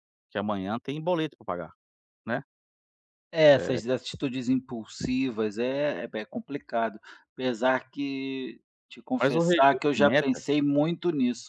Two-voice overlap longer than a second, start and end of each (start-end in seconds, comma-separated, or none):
9.2-10.5